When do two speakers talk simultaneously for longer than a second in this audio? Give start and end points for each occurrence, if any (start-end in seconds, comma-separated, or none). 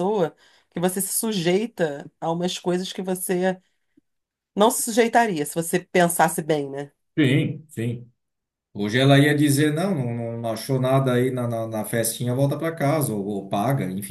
none